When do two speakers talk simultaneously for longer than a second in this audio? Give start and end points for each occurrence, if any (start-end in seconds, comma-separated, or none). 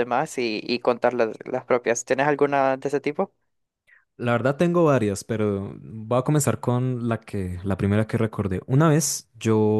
none